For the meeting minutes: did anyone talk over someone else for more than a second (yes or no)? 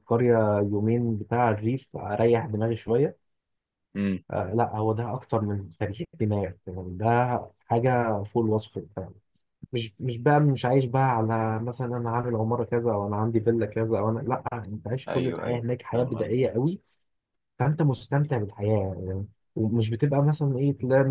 yes